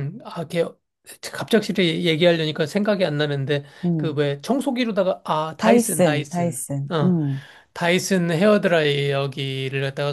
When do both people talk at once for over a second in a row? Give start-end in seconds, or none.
5.6-7.2